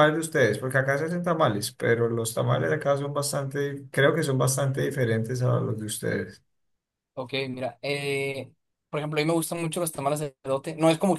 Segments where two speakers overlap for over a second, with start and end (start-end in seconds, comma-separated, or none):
none